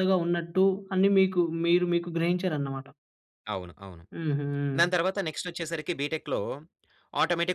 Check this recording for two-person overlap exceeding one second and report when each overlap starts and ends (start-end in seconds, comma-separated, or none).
none